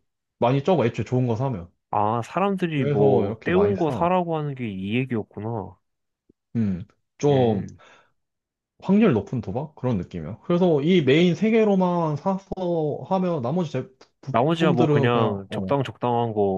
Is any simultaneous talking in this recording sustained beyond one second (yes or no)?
yes